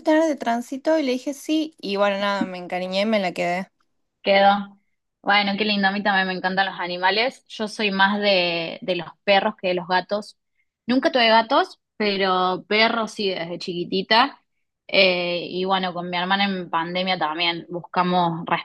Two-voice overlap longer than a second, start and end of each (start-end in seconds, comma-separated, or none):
none